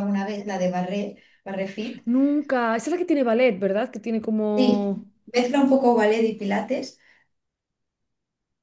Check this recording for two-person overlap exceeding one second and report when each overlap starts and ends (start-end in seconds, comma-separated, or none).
none